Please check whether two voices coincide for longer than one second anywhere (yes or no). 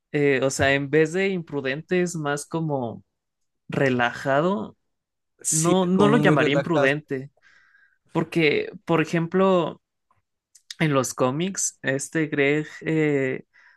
yes